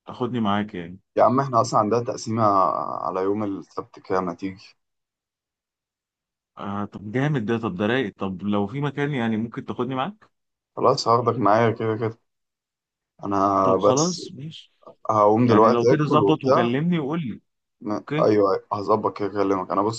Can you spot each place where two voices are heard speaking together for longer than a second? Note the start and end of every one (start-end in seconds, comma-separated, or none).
15.4-16.7